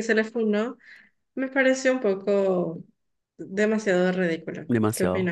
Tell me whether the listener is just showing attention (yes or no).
no